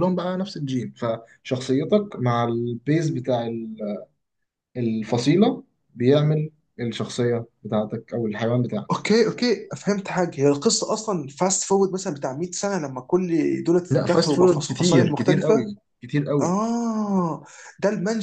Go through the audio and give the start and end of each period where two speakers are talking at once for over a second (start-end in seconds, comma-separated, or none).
13.9-15.7